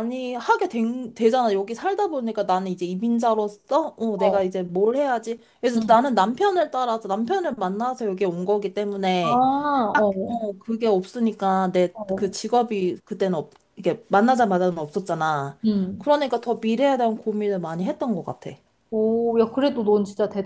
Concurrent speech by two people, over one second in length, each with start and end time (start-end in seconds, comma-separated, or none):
none